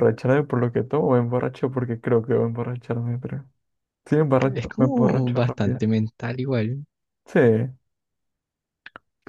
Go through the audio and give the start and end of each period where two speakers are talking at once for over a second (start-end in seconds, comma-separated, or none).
4.5-5.8